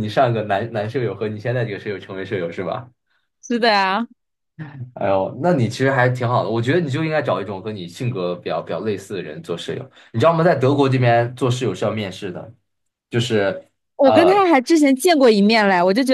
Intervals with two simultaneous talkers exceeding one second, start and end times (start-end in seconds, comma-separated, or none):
none